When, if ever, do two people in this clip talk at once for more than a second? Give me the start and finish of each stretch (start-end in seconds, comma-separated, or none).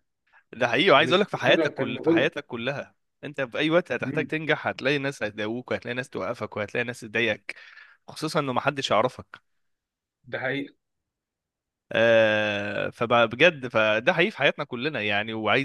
1.0-2.3